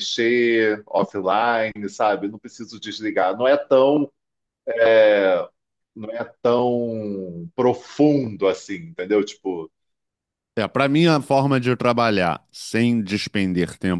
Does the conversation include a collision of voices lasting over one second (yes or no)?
no